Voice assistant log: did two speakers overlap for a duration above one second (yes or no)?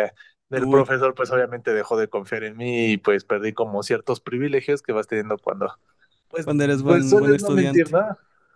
yes